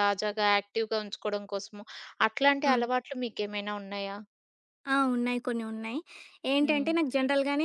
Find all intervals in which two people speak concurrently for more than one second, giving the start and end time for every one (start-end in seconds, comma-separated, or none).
none